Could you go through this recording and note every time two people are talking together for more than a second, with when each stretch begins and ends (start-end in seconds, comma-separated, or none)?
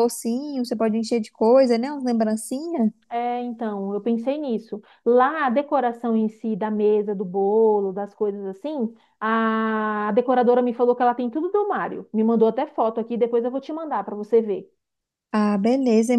none